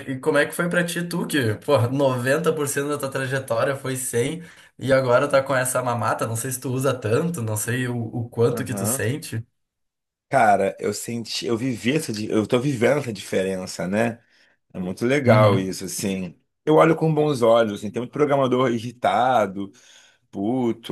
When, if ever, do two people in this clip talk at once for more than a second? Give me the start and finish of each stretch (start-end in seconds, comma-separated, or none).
none